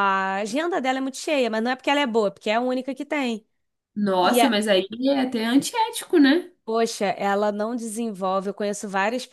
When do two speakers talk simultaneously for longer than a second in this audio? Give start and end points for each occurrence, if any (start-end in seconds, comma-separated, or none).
none